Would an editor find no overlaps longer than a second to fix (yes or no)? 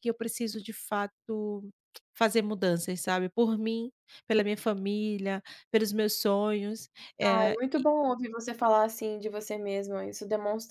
yes